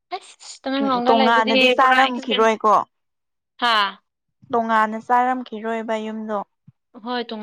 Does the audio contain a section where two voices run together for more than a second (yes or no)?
yes